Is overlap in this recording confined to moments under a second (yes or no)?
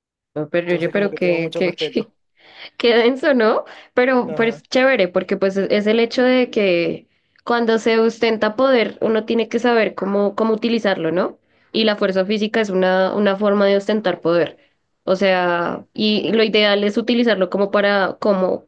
no